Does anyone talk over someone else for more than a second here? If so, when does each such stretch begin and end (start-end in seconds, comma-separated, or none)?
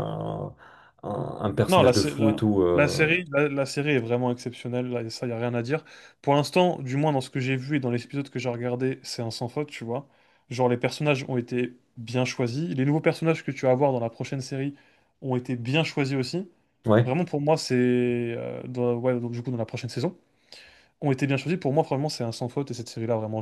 1.7-3.1